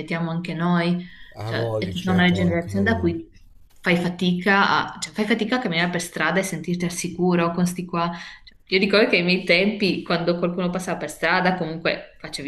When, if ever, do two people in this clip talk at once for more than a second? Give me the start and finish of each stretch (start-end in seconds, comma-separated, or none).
1.4-3.2